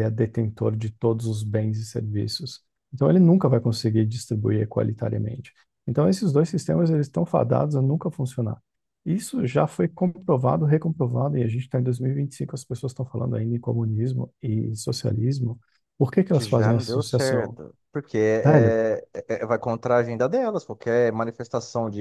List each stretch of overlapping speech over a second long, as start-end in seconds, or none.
16.3-17.6